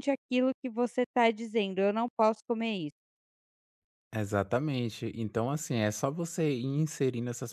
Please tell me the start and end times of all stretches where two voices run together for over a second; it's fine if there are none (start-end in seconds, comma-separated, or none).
none